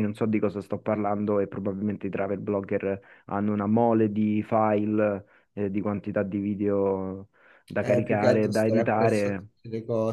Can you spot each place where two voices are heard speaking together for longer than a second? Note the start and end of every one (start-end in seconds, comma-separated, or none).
7.8-9.5